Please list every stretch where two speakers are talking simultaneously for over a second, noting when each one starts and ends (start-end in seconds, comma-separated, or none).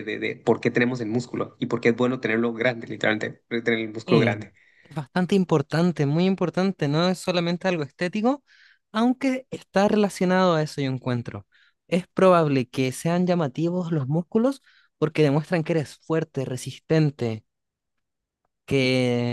none